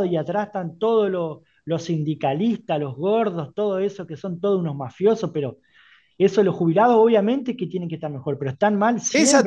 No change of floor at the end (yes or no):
no